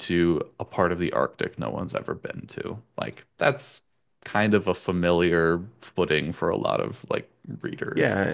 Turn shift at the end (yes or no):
yes